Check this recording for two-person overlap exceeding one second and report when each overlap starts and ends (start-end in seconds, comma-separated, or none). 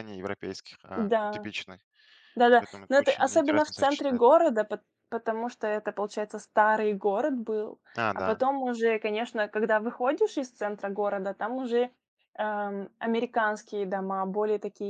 2.6-4.4